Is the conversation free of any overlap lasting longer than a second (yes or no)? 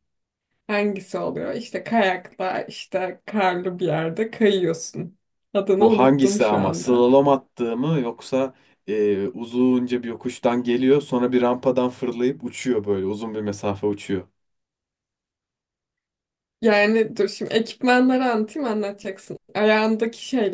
no